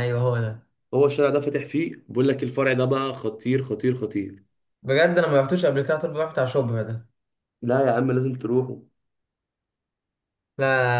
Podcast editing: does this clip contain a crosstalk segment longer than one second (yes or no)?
no